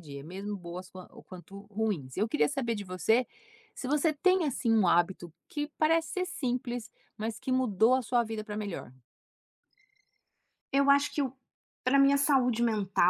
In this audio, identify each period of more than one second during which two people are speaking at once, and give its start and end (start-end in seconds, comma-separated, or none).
none